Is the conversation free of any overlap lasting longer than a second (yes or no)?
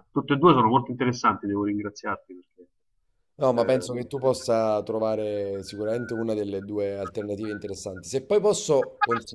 yes